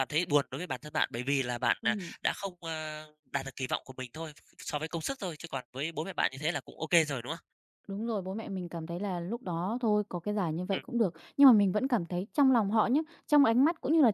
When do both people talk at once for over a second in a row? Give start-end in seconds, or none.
none